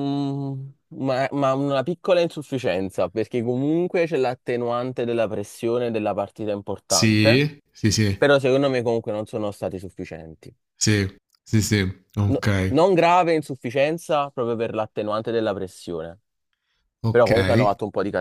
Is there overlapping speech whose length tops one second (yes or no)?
no